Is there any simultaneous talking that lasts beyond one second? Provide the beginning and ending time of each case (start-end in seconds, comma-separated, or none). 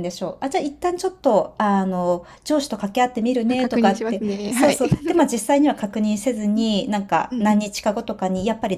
3.5-4.8